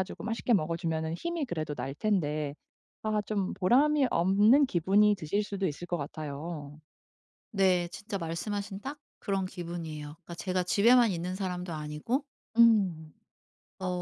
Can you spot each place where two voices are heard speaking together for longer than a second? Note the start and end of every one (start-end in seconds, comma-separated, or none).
none